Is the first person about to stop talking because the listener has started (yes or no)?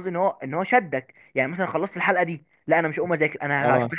no